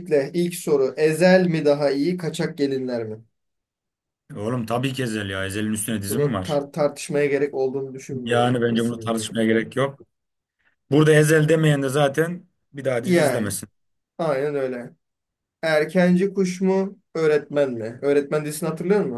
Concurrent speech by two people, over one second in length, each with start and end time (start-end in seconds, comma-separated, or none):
8.2-9.7